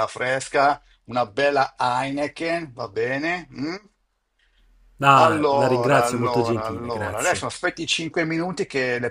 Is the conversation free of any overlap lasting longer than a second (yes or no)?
no